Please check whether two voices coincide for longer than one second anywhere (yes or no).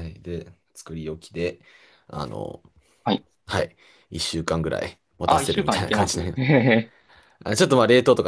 yes